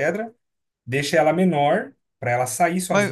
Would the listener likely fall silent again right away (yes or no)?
no